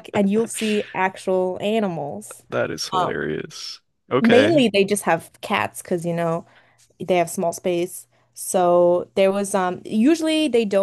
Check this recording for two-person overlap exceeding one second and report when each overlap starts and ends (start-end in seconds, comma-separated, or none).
none